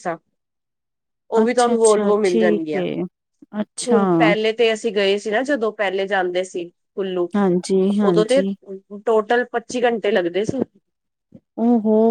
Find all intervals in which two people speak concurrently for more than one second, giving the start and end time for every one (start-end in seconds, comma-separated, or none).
1.4-2.8